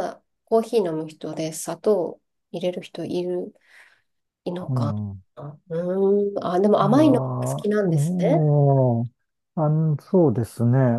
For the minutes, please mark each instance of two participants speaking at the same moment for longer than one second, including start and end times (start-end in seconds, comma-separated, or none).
6.8-8.5